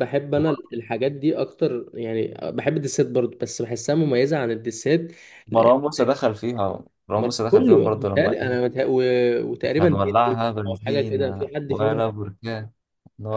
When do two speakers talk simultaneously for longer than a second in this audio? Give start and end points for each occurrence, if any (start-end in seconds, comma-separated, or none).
7.2-8.6, 9.6-12.0